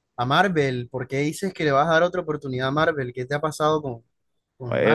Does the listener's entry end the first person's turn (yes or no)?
yes